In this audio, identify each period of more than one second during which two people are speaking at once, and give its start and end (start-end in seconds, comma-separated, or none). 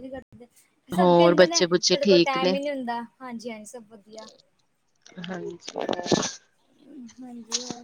1.0-2.6